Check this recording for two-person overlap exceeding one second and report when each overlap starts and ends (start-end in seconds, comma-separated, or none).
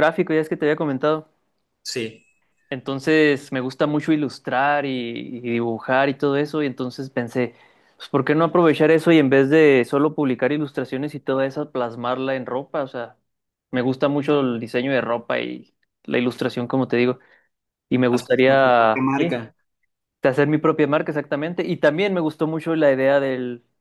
18.1-19.4